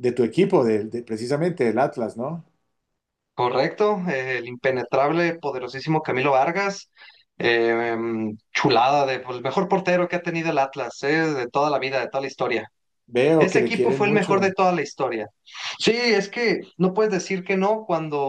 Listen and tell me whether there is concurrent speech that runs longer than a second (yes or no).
yes